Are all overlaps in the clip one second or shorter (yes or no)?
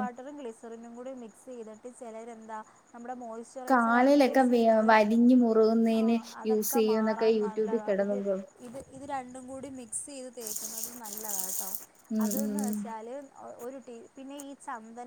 no